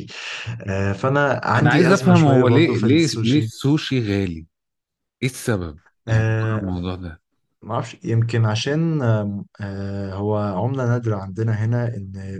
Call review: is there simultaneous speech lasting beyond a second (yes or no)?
yes